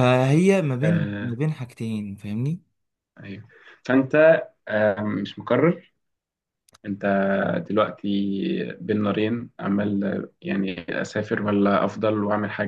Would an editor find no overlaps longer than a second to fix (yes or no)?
yes